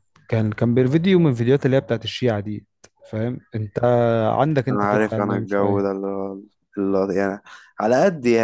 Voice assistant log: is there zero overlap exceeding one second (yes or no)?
no